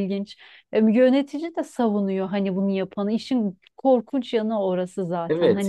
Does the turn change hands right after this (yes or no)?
yes